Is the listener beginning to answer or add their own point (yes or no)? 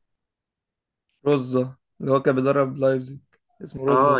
yes